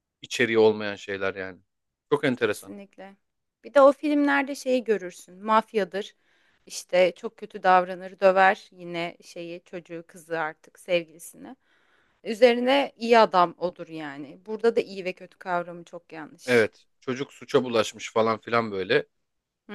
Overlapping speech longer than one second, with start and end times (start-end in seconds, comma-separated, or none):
none